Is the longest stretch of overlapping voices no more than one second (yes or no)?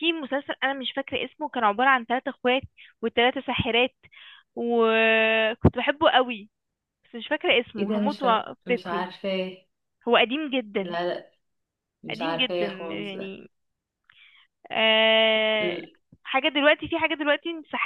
no